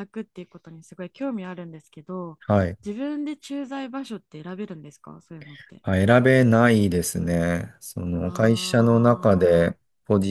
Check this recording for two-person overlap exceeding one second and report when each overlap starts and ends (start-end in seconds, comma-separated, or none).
8.2-9.7